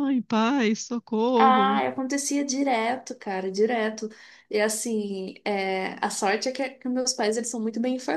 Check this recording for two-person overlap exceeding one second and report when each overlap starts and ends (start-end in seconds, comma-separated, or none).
none